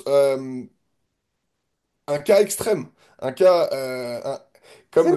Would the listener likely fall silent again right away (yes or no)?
no